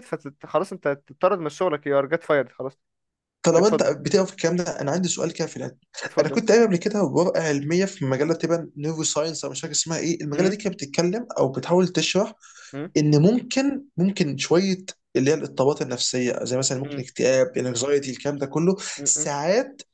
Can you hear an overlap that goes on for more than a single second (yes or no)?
no